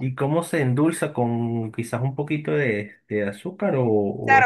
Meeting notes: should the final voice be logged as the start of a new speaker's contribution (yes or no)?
yes